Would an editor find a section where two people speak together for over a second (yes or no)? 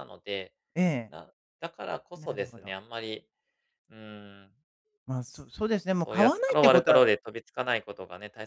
yes